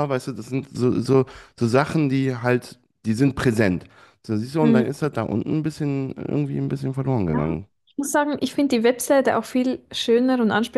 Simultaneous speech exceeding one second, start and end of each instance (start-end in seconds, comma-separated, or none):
none